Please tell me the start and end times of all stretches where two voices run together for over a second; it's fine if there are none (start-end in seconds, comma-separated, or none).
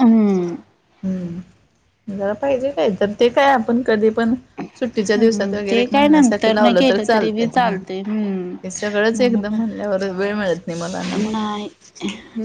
5.1-7.5